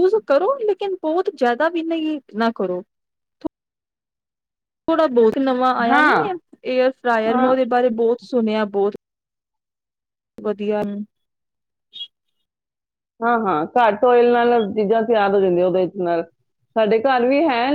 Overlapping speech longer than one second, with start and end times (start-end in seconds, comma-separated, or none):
none